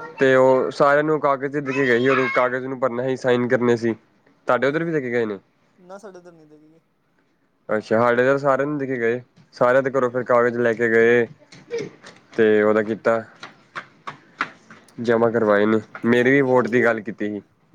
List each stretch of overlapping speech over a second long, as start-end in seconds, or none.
15.3-17.0